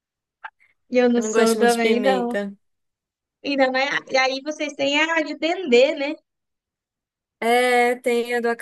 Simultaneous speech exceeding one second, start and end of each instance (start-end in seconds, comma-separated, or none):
1.2-2.4